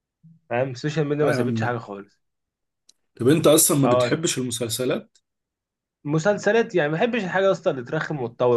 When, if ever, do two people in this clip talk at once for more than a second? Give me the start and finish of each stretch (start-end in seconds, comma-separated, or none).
none